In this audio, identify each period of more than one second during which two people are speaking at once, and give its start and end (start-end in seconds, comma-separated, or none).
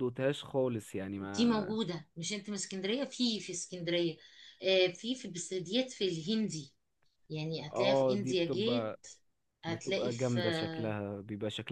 7.7-9.0, 9.7-11.0